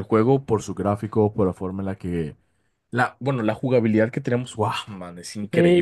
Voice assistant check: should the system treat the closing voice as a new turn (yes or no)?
yes